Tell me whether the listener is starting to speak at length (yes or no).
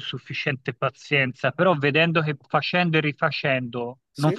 no